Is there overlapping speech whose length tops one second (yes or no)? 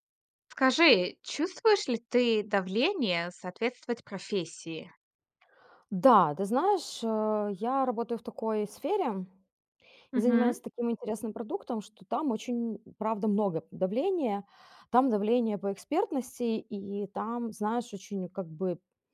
no